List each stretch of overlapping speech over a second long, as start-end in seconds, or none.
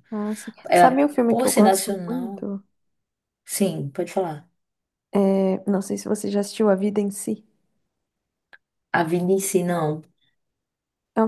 0.7-2.5